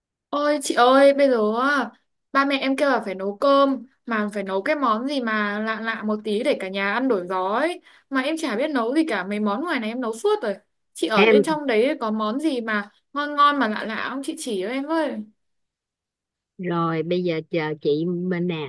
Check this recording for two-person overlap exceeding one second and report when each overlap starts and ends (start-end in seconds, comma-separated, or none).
none